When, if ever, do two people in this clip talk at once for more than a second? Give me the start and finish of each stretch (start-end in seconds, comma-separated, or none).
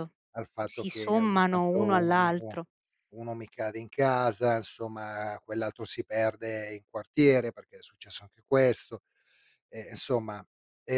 0.6-2.5